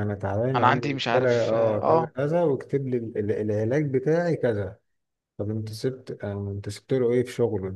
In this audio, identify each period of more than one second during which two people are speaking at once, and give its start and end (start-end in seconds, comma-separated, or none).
0.6-2.1